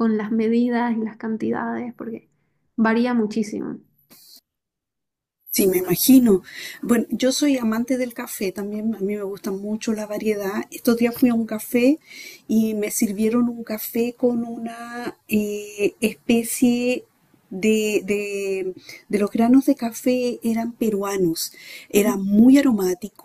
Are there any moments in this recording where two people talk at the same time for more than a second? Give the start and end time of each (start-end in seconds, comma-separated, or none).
none